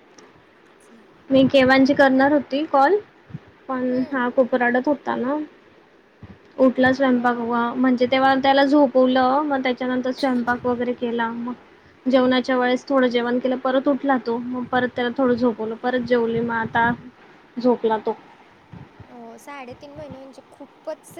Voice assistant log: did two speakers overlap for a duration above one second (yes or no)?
no